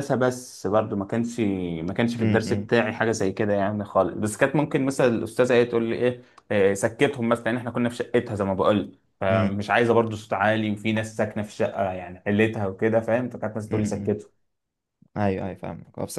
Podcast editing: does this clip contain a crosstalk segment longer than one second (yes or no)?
no